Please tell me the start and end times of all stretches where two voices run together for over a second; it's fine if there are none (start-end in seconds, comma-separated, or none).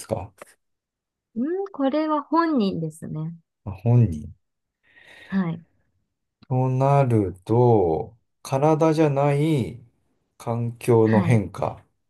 none